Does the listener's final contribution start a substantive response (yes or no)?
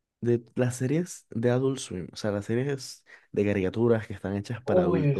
no